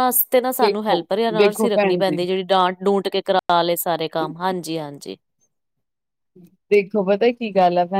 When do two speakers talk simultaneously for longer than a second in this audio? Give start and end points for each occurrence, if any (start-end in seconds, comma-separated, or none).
0.6-2.2